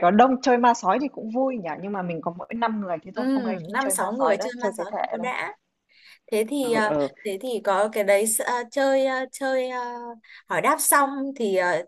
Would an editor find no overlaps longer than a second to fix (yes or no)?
no